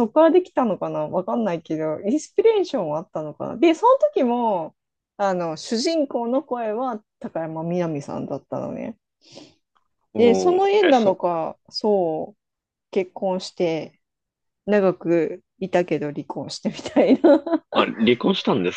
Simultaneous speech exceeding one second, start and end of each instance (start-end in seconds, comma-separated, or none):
10.2-11.4